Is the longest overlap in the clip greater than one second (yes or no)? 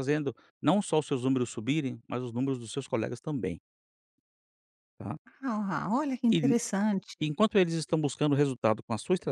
no